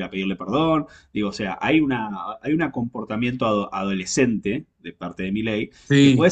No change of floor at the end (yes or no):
yes